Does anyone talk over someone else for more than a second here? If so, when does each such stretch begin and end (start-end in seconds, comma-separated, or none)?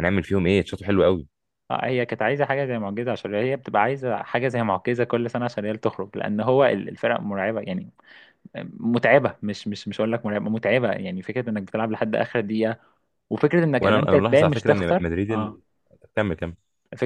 13.8-15.6